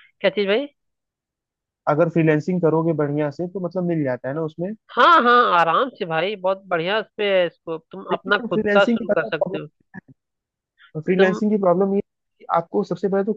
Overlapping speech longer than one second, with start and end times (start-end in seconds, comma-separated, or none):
8.1-9.6